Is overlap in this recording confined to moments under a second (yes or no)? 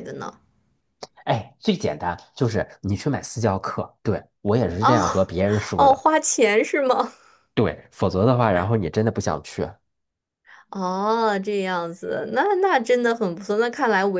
yes